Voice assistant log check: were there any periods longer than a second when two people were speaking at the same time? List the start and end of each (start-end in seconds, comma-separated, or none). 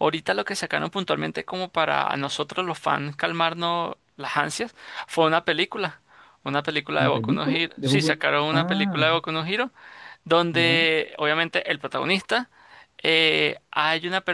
7.0-9.1